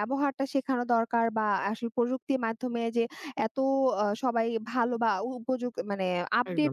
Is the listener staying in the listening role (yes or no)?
yes